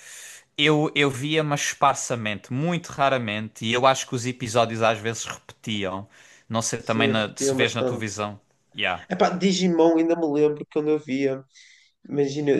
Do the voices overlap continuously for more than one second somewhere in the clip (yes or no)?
yes